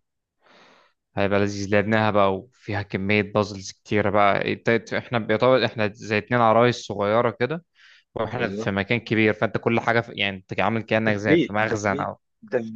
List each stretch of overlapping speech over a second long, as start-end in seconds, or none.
11.0-12.2